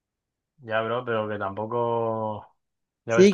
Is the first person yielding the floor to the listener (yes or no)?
yes